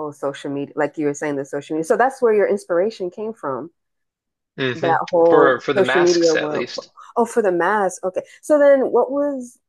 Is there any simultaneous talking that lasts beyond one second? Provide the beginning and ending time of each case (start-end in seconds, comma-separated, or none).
4.7-6.7